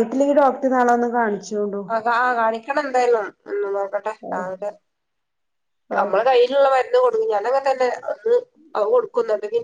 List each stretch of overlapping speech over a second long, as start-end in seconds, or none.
none